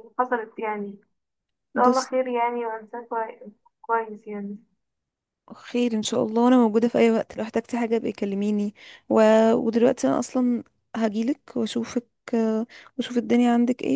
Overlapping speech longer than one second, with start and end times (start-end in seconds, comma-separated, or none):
none